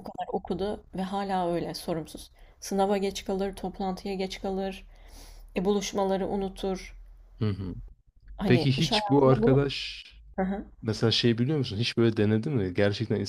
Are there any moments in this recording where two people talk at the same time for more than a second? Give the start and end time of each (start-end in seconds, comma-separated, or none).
8.5-9.7